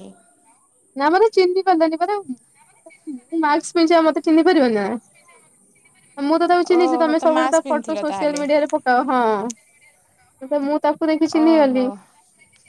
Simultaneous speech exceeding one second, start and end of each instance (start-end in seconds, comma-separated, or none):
6.8-8.4